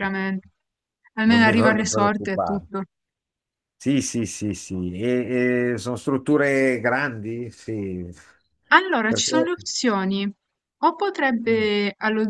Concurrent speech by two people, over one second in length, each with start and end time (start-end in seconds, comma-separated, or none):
1.2-2.6